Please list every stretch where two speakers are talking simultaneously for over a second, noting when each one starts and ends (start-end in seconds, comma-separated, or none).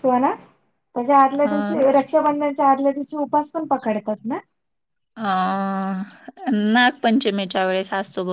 none